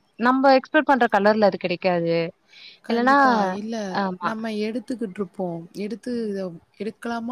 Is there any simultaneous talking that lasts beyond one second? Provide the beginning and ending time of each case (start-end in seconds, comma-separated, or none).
none